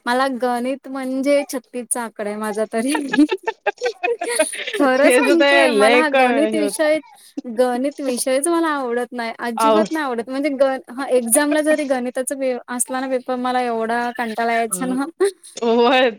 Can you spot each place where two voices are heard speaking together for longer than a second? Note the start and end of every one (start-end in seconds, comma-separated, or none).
5.0-6.8